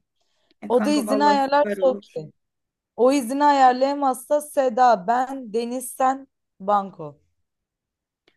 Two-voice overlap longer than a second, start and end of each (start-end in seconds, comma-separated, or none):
0.7-2.2